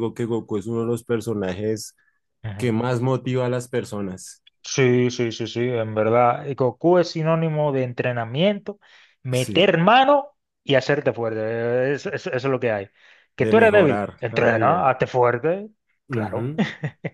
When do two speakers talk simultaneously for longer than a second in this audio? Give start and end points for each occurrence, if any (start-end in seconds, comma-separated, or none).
13.4-14.9